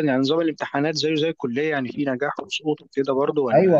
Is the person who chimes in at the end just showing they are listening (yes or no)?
no